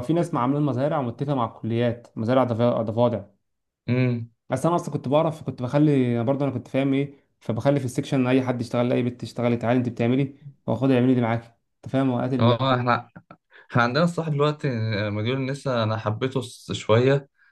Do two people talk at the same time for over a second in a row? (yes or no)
no